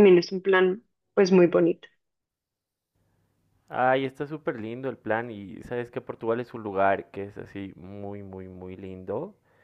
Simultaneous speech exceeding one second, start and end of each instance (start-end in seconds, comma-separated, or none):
none